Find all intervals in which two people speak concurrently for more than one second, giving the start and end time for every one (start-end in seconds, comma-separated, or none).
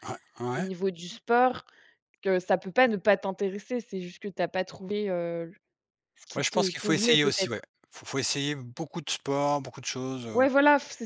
6.3-7.6